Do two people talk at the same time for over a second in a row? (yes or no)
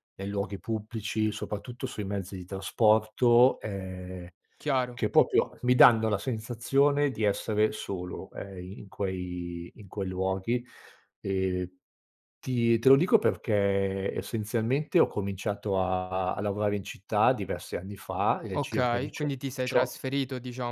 yes